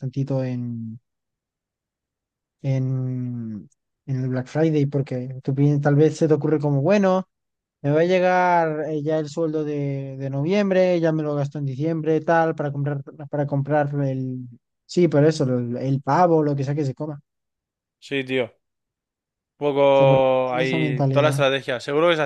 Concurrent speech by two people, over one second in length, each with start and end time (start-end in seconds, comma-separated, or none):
19.9-21.4